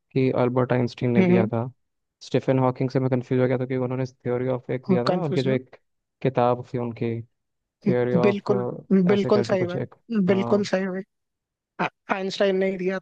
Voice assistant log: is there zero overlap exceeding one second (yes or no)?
no